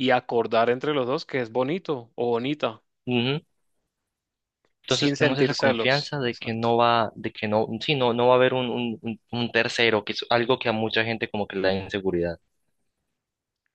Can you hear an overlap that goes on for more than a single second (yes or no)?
yes